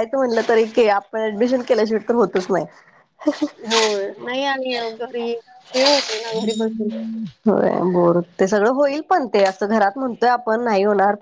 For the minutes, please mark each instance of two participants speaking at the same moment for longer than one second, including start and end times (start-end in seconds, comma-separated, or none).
none